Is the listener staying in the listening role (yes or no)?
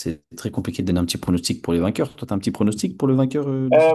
no